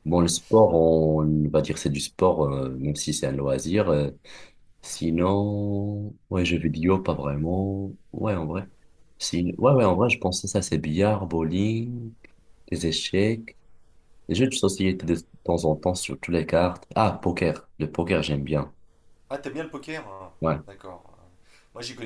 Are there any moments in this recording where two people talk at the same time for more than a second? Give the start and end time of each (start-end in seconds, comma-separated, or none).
none